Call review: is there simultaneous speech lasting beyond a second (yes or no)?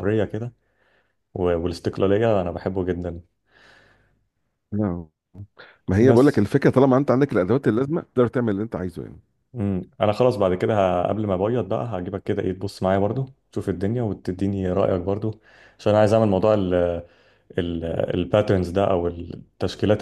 no